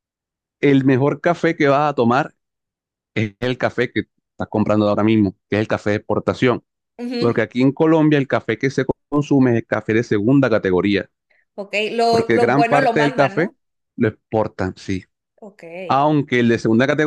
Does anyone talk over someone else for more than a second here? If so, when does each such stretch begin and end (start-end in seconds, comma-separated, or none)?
12.1-13.5